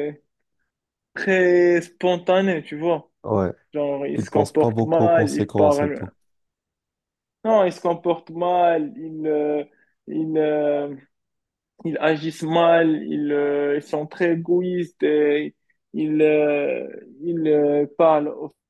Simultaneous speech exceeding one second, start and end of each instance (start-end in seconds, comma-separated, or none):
4.1-6.1